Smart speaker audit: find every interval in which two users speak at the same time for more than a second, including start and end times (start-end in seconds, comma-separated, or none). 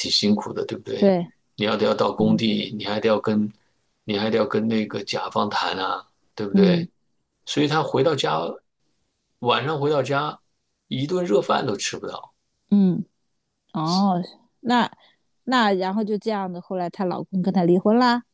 none